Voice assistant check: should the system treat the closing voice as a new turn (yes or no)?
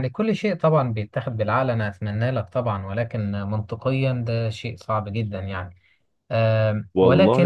yes